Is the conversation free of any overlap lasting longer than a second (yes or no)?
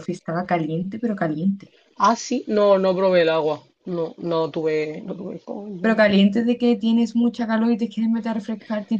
yes